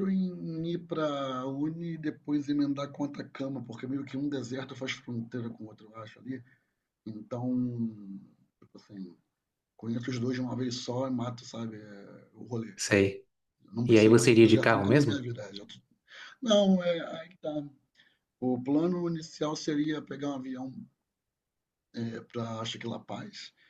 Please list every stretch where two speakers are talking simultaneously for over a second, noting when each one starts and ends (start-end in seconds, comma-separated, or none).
13.9-15.2